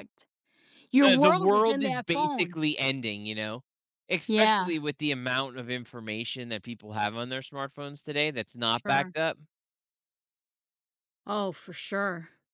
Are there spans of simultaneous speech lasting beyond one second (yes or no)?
yes